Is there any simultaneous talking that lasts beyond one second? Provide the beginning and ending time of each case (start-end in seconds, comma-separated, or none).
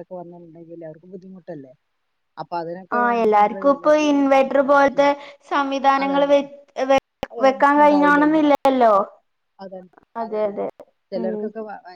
none